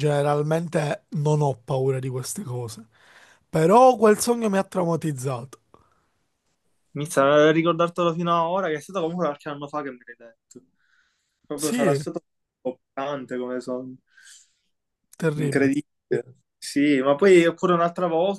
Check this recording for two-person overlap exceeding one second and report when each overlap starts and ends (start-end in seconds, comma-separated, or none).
none